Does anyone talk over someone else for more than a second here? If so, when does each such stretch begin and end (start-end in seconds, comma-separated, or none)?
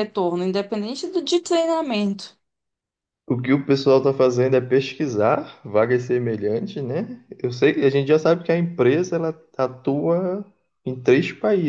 none